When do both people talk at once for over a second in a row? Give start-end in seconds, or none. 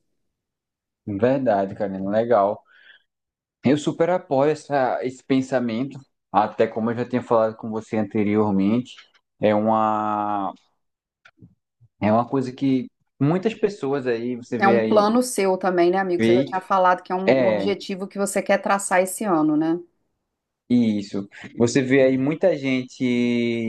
none